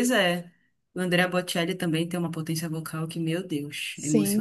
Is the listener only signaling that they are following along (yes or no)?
no